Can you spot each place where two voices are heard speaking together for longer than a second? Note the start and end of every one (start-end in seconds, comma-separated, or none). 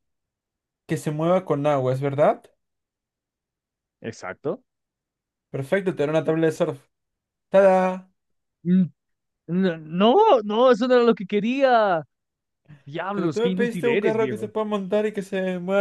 13.1-14.5